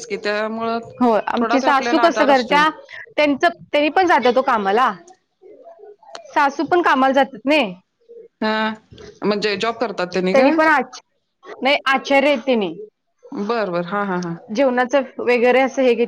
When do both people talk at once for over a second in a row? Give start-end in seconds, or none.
1.4-2.6